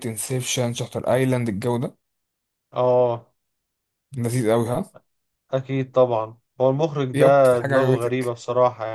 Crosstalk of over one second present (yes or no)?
yes